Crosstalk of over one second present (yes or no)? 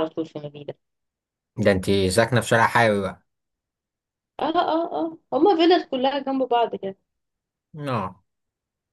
no